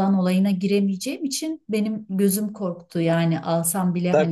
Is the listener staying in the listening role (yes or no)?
no